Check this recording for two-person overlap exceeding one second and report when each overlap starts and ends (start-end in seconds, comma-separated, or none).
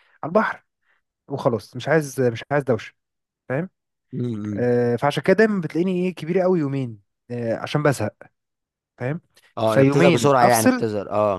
9.7-10.8